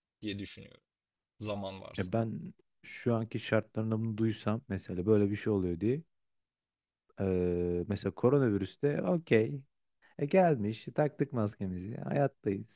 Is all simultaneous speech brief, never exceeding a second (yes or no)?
yes